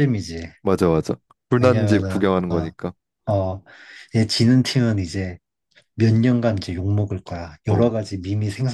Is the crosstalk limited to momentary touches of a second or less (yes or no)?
no